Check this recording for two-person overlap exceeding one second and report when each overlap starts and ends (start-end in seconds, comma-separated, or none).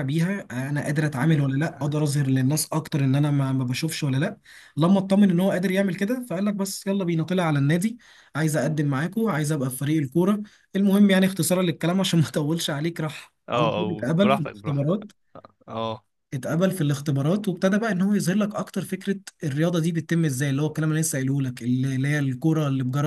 13.5-14.9